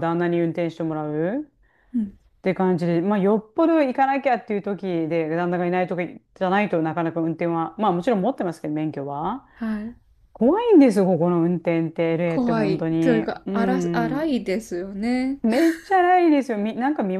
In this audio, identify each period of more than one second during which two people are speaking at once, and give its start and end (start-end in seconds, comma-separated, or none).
12.2-14.3